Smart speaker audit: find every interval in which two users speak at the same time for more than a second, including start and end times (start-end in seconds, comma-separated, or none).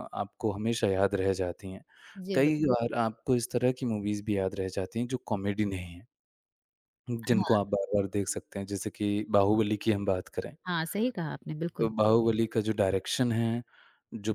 none